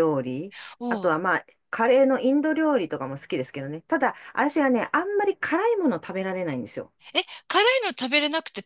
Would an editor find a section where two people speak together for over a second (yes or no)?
no